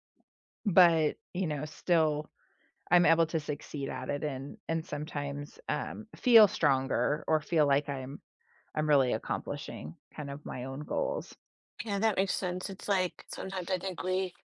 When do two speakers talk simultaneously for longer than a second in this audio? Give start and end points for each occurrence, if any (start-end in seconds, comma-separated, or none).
none